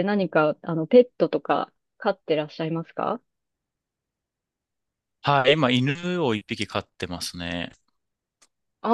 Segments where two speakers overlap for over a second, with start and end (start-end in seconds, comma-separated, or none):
none